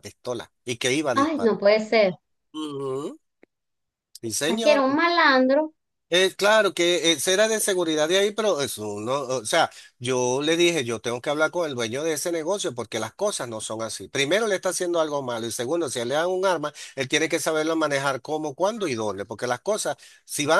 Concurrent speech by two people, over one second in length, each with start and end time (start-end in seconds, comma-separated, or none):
none